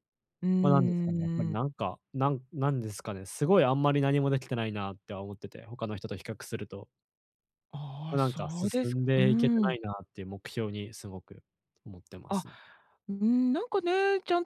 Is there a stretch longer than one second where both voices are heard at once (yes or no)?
yes